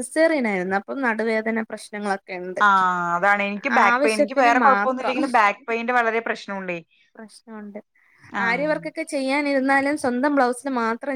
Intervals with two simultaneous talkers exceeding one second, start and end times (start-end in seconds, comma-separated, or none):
3.8-5.2